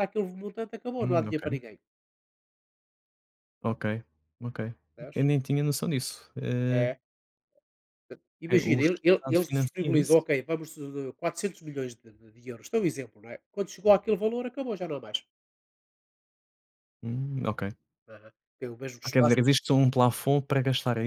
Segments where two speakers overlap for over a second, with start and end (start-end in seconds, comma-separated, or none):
8.5-10.2